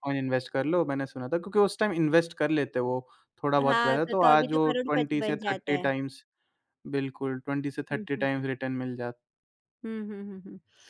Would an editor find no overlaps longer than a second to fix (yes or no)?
no